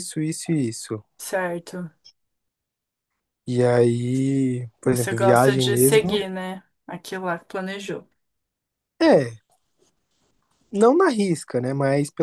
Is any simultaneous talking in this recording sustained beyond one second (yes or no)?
yes